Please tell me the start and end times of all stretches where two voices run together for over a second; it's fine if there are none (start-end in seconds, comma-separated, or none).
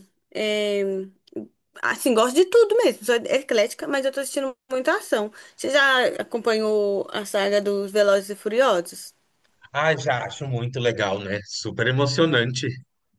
none